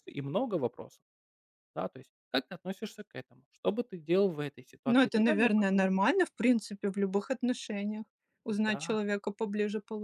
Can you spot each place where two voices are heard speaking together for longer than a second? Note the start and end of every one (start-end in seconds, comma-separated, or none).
4.9-6.1